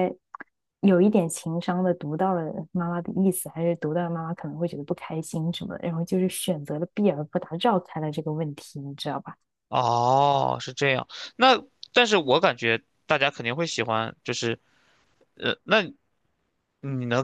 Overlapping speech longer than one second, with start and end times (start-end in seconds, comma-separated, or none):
none